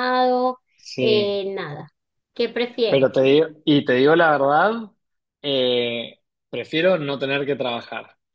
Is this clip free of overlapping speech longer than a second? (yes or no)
yes